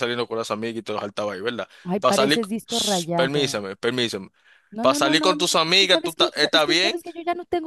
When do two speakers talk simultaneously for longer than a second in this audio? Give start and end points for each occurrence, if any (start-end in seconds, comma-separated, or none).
1.9-3.6, 4.8-7.0